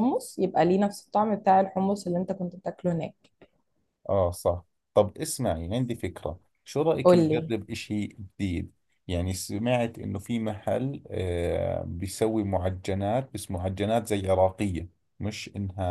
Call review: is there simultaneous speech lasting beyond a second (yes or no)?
no